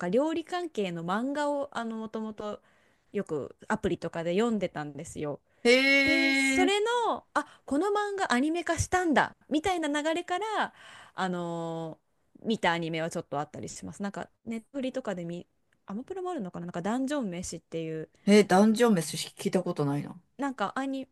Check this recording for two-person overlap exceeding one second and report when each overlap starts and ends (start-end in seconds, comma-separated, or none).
none